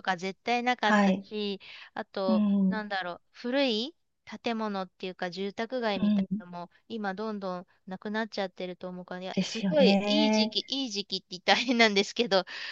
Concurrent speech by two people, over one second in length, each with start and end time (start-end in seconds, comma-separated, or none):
9.3-10.6